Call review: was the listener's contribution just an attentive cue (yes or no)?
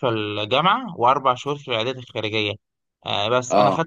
yes